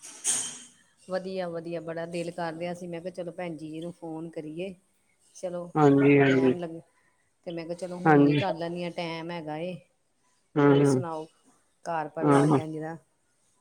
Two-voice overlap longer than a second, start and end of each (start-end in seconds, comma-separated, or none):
none